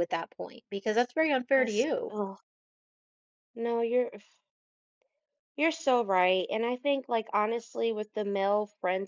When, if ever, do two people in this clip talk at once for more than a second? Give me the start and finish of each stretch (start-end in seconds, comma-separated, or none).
none